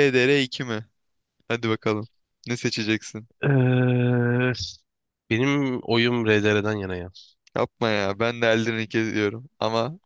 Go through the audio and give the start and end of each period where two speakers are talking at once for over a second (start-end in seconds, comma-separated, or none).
none